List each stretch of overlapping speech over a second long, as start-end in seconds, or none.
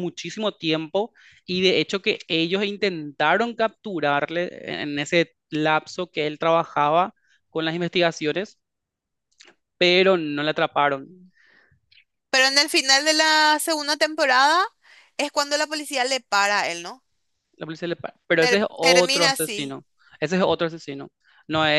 18.4-19.8